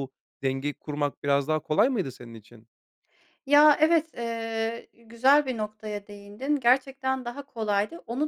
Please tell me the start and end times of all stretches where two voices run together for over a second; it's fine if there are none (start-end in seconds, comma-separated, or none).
none